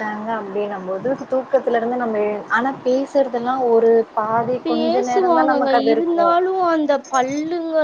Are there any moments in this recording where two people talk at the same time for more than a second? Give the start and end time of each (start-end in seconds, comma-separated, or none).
4.7-6.3